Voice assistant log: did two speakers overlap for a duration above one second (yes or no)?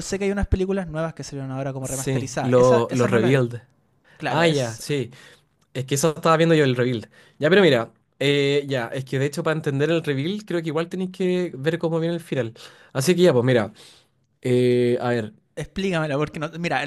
yes